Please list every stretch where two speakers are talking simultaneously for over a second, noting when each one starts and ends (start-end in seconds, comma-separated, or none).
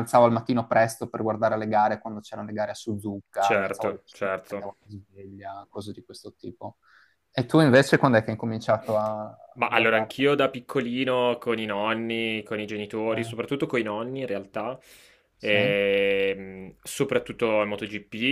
3.4-4.7